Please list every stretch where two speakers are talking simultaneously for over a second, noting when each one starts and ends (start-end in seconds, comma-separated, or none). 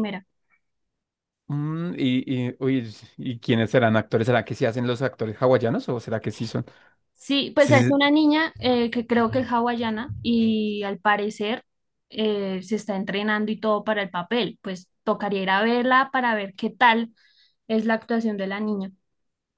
none